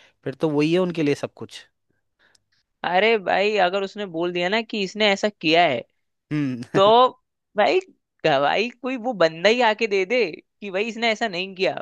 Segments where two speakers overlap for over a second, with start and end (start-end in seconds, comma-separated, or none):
none